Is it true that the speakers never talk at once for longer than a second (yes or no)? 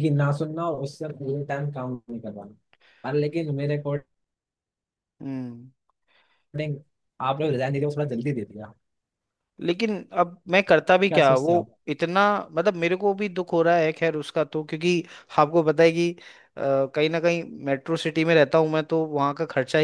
yes